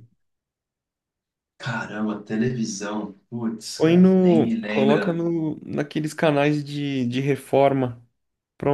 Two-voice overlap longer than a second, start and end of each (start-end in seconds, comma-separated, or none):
3.8-5.2